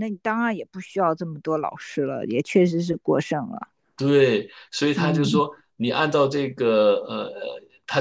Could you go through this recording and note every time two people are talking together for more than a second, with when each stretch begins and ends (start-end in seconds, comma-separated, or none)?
none